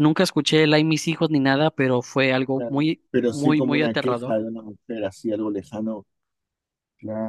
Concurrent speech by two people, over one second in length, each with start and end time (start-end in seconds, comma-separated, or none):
2.6-4.3